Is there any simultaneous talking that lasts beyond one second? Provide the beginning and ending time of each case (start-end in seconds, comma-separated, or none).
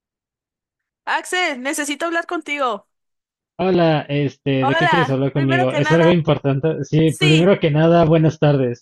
4.6-6.1